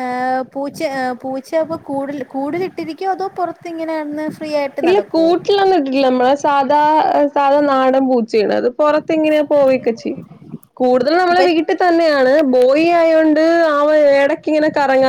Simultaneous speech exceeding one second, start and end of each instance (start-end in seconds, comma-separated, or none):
none